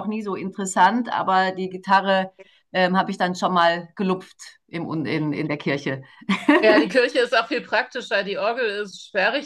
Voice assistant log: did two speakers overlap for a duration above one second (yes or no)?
no